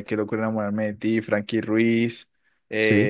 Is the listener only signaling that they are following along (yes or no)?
yes